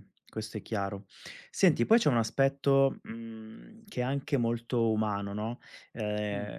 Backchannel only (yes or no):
yes